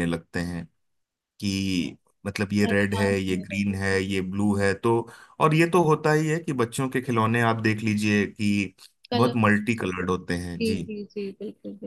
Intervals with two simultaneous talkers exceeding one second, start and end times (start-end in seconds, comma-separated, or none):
2.6-4.0